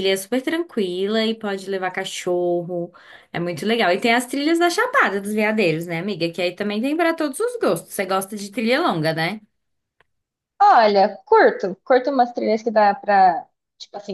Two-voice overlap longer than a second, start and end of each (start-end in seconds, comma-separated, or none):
none